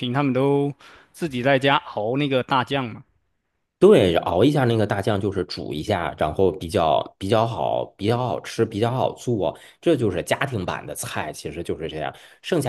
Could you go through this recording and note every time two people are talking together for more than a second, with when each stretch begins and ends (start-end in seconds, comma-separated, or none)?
none